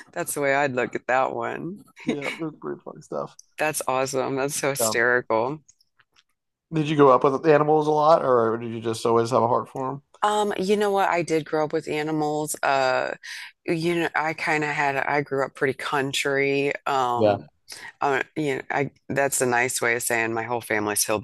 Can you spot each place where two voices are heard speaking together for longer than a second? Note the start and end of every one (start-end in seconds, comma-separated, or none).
none